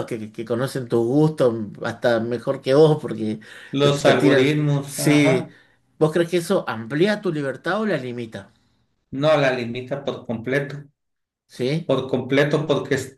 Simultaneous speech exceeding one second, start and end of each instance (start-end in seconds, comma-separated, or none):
4.0-5.5